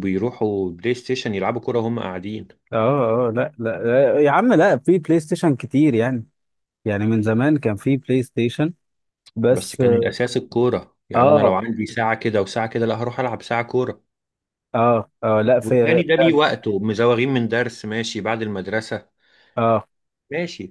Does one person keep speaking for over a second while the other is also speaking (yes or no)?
no